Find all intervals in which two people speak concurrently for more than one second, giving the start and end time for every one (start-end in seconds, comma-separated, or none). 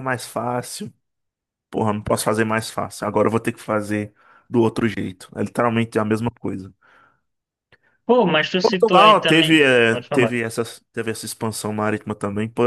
8.6-10.3